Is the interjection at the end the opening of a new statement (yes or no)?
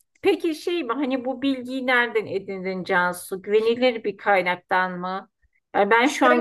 no